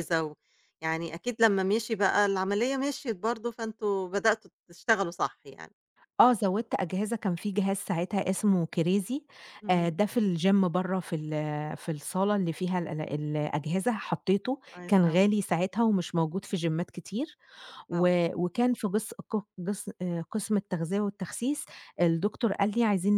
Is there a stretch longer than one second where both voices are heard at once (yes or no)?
no